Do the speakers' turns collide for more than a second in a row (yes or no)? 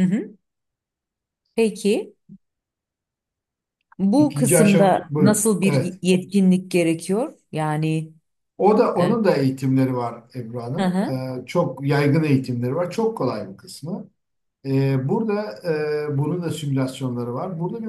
yes